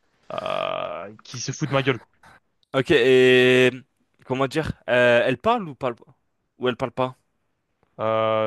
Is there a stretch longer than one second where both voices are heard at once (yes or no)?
no